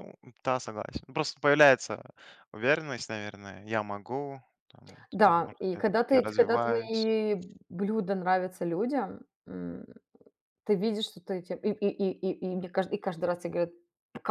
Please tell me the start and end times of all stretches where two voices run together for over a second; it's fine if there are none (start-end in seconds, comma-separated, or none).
5.1-7.1